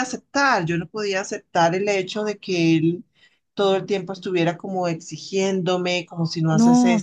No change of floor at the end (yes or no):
no